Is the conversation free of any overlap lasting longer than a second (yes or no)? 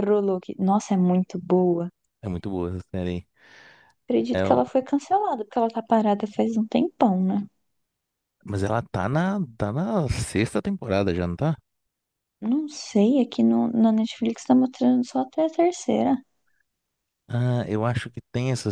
yes